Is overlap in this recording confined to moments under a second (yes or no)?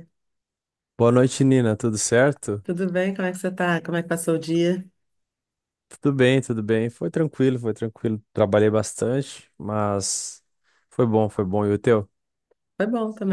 yes